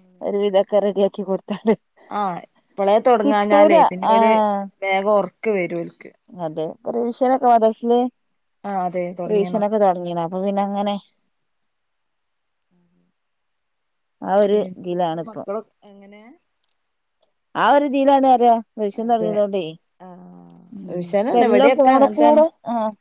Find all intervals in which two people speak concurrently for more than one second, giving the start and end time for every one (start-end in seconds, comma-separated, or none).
20.8-22.4